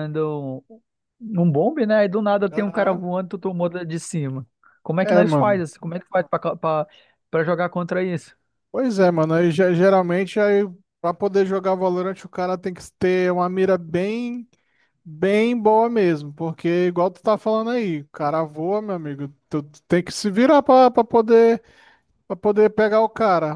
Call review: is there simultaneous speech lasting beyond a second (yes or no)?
no